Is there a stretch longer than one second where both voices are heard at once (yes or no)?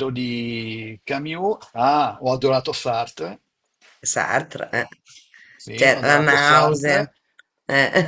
yes